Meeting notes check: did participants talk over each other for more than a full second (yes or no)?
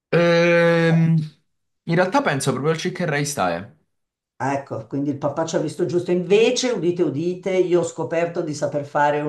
no